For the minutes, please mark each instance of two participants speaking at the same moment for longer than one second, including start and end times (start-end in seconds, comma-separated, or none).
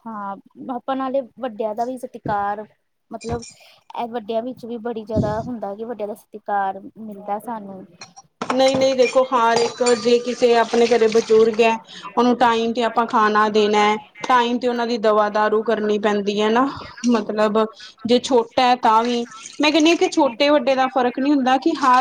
none